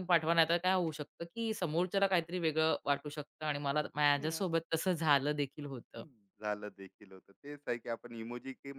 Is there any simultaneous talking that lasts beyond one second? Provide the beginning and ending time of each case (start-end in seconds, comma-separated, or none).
none